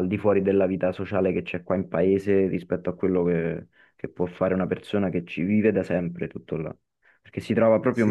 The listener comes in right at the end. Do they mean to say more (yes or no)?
yes